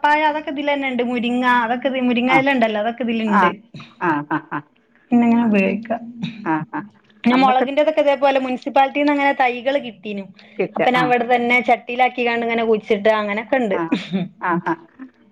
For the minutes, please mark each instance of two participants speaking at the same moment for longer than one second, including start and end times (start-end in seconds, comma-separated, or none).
none